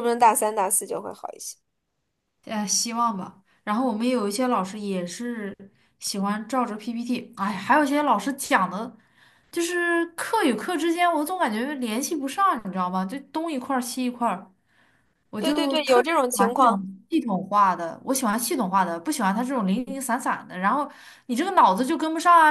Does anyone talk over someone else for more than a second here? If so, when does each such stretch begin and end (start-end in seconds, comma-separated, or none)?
15.4-16.9